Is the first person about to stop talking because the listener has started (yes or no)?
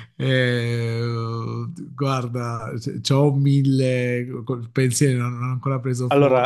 yes